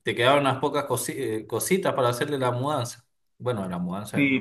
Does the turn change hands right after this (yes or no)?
yes